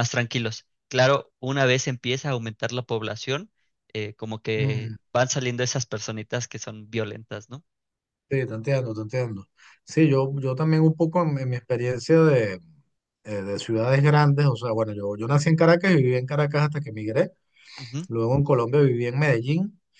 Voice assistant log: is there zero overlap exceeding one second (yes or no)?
yes